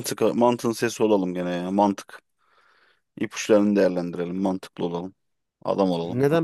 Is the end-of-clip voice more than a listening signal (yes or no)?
yes